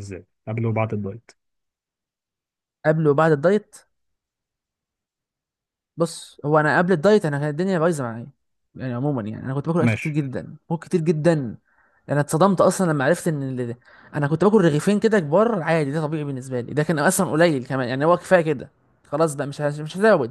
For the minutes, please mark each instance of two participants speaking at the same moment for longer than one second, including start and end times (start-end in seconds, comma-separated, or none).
none